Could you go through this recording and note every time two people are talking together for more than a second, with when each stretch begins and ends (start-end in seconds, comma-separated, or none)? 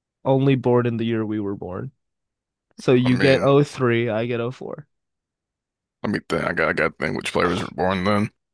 none